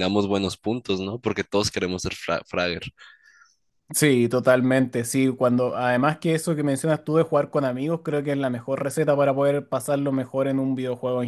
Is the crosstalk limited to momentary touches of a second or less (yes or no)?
yes